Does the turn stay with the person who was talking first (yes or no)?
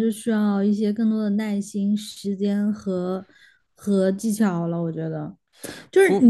yes